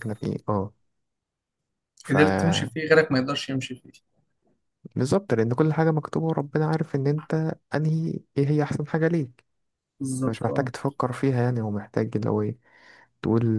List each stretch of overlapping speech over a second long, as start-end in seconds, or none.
none